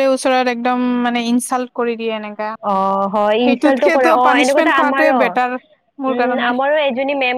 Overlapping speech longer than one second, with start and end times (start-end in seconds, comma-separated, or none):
3.5-5.2